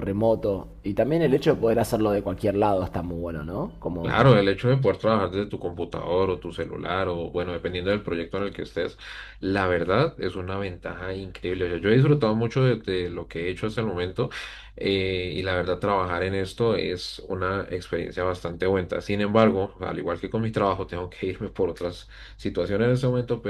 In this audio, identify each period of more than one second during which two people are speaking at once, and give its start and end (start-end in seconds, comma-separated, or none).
none